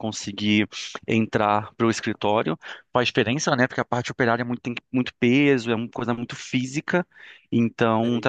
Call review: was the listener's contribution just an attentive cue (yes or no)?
no